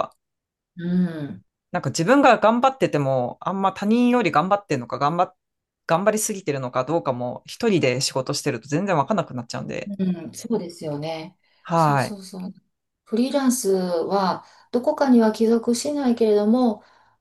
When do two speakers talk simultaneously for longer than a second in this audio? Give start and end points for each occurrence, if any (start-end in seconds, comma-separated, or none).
none